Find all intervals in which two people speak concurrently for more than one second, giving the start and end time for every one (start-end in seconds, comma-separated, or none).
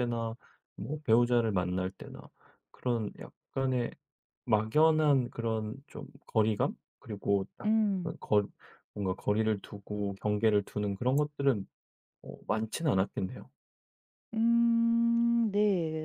none